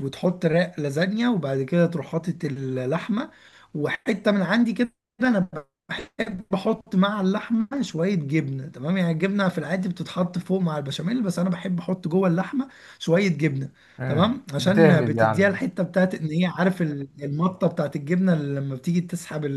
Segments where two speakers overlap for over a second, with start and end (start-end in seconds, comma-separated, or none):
14.0-15.6